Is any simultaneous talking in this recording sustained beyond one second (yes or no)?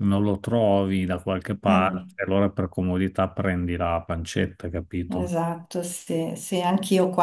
no